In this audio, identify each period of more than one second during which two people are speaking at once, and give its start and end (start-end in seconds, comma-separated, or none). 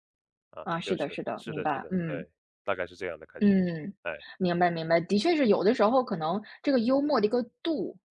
0.6-2.3